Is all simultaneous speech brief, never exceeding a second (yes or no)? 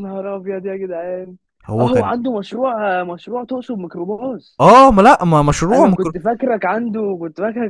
yes